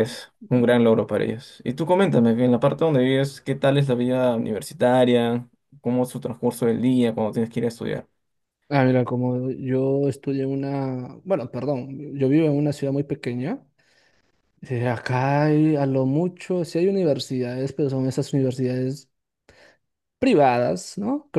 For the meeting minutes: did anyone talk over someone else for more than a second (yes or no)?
no